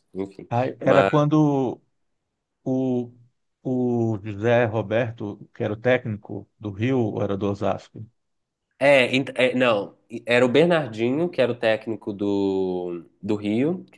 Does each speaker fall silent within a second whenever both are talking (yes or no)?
yes